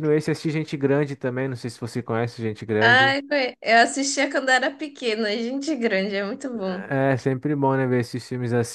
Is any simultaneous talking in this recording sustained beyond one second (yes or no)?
no